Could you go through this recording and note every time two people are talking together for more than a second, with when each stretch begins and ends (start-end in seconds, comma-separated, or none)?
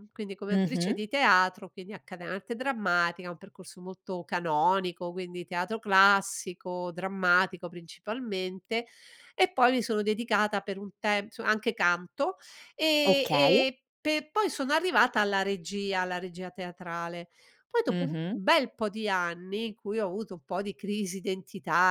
none